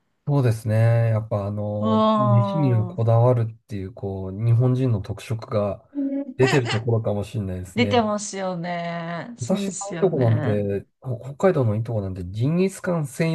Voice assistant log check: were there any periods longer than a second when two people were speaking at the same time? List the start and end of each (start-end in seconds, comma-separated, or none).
1.8-3.0, 9.4-10.7